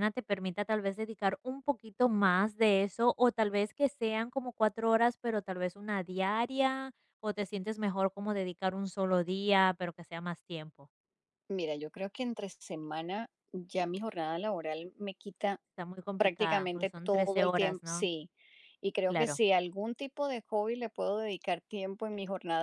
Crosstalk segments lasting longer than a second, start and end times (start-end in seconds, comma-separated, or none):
16.2-18.1